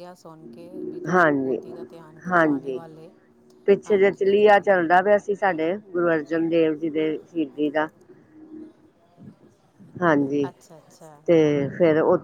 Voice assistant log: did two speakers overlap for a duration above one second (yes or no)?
no